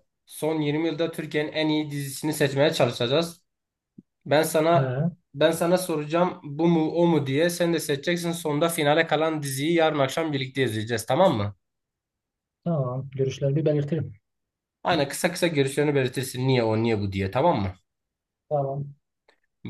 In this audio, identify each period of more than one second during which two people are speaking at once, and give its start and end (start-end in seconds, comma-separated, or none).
none